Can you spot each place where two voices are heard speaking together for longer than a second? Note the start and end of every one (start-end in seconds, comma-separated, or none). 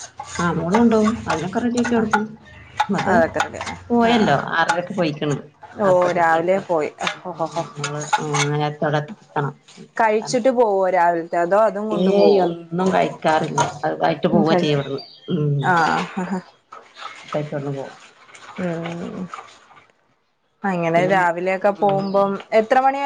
20.9-22.4